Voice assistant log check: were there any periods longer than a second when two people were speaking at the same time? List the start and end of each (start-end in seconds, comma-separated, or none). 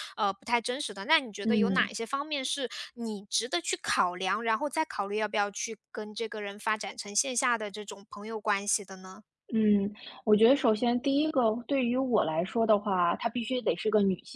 none